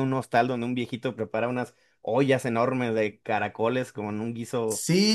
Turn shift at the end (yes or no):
yes